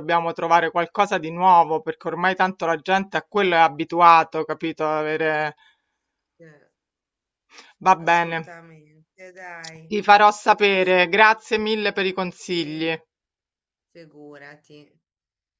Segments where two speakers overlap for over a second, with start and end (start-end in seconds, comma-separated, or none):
none